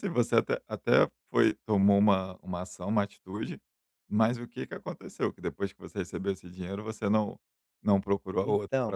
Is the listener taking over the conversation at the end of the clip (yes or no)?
yes